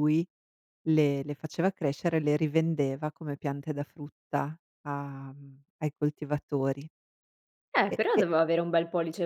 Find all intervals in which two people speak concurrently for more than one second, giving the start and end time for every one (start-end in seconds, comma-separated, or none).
none